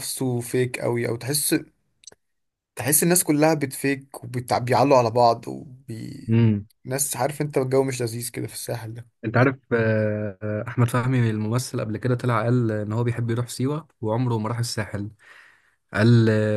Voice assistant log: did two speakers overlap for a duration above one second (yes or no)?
no